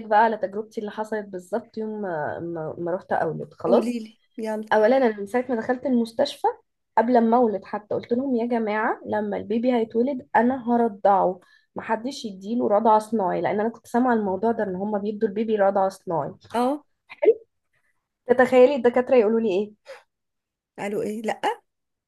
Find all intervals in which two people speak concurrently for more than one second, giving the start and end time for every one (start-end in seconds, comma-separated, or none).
none